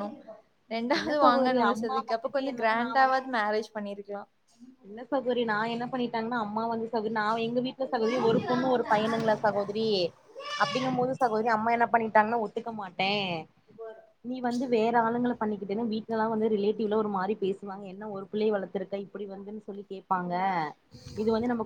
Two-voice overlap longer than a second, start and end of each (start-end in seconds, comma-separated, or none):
1.0-3.0